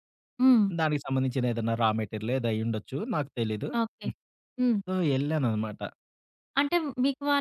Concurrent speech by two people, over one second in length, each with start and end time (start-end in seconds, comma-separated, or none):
none